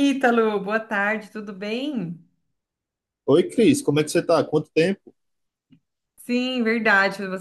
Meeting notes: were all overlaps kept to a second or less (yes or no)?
yes